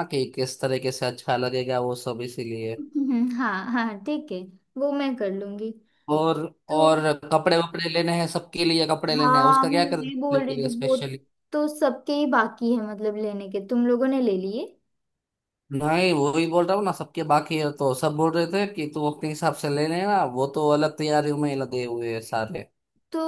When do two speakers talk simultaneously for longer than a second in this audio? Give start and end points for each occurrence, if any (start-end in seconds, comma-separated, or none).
9.2-10.9